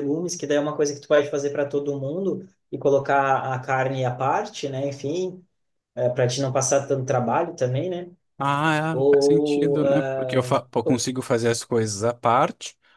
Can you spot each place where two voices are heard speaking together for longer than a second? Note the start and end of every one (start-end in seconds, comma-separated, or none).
8.9-11.1